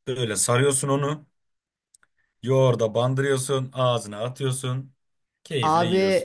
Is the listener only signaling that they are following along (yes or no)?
no